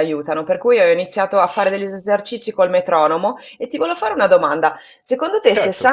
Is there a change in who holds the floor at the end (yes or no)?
no